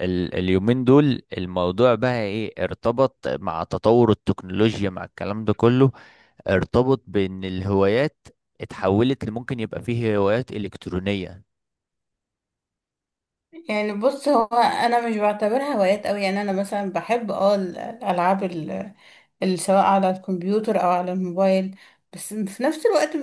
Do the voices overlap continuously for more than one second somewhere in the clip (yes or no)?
no